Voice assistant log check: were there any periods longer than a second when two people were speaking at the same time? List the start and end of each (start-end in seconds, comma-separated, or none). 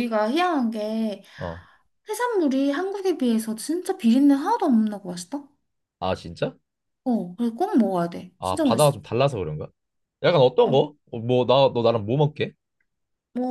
none